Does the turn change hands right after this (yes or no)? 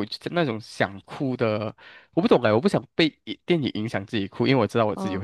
yes